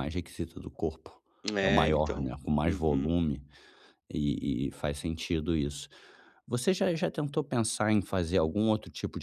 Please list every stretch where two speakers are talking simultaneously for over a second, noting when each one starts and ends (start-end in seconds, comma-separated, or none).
1.6-3.1